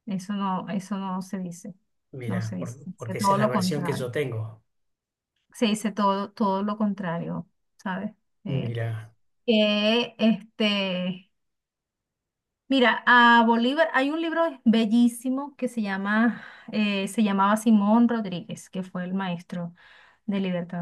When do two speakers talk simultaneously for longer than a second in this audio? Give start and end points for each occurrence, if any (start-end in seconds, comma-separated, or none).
2.2-4.1